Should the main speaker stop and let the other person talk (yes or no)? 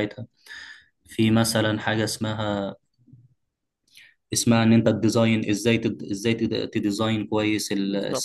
no